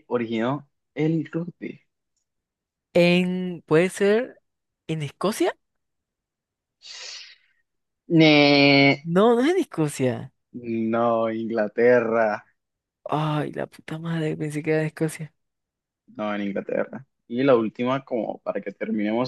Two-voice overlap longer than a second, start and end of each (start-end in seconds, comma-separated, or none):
none